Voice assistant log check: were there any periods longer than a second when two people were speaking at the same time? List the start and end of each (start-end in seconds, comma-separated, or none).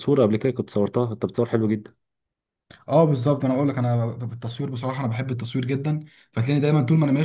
none